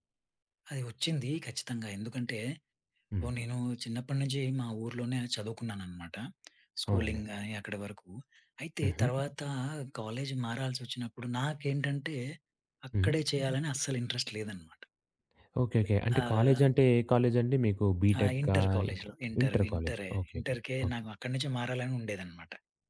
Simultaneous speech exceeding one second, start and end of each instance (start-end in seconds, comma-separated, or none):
18.2-21.0